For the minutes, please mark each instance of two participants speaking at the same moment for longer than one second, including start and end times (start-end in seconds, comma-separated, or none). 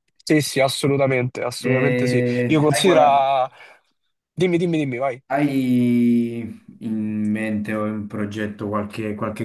none